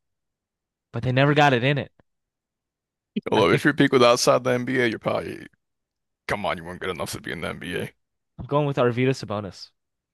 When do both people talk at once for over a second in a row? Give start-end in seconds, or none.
none